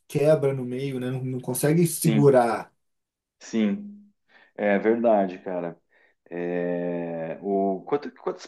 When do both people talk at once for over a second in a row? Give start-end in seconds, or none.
none